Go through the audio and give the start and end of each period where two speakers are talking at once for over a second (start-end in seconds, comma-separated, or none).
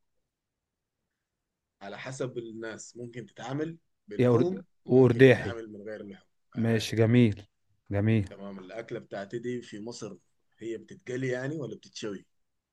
4.2-5.5